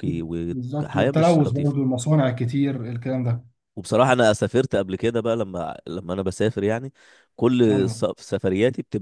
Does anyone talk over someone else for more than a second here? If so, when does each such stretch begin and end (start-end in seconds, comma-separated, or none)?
0.5-1.8